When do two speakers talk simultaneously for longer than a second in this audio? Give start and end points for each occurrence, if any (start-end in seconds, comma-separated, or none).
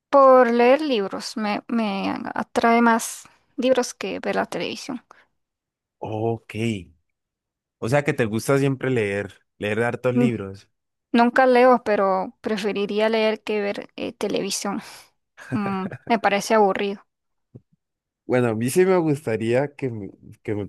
none